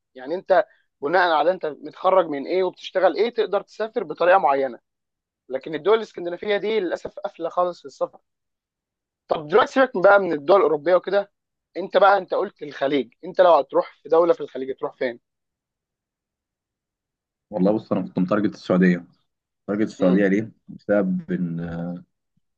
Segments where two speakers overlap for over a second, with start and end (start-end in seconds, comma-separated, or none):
none